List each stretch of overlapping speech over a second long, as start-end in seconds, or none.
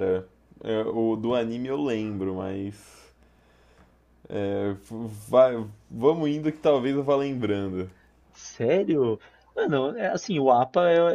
none